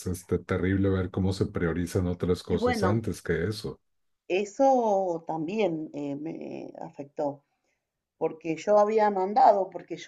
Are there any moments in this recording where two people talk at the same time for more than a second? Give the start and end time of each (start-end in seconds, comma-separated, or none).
none